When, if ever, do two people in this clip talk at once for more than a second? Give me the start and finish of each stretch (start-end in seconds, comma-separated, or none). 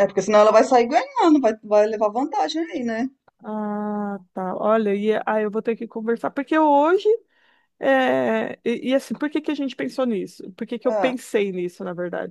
none